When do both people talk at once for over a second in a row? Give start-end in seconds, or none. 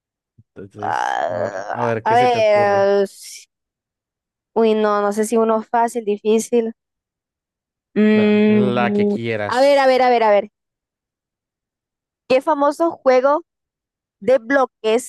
0.8-2.9, 8.1-9.7